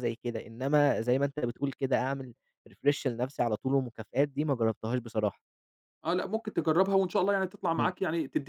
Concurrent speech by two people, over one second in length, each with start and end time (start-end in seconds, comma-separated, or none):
none